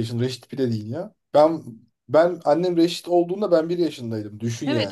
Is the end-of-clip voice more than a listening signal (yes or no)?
yes